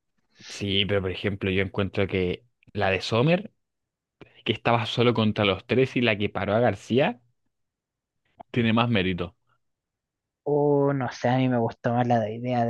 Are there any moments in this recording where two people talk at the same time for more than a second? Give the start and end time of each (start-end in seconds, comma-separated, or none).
none